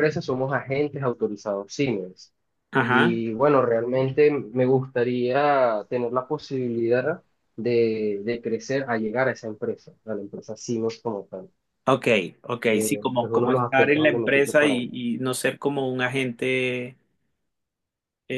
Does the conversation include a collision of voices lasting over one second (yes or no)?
yes